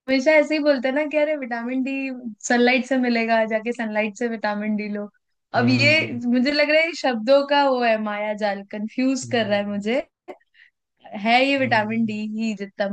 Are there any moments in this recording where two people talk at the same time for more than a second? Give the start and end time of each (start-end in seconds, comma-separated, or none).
none